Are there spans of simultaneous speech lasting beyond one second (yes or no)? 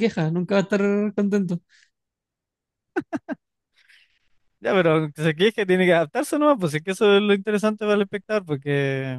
no